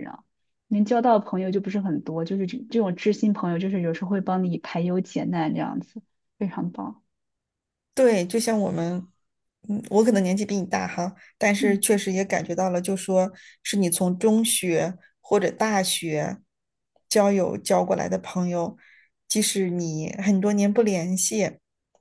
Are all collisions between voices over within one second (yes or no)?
yes